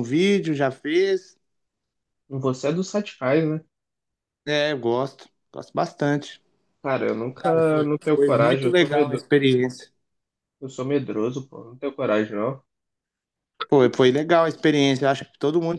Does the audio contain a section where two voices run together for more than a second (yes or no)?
yes